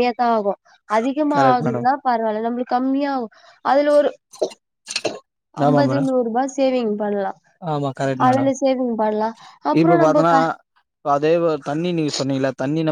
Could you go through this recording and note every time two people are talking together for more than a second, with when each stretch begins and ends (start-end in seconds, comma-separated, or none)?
none